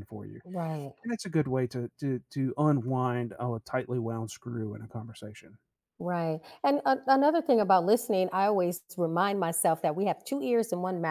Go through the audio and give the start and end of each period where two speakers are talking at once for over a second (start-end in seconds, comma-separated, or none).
none